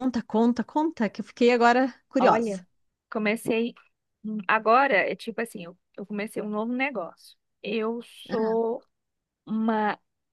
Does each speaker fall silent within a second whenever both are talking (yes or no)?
yes